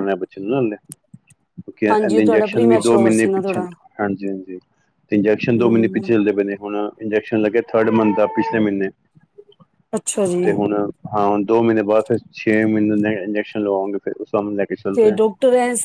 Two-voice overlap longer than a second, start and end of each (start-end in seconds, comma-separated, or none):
1.9-3.6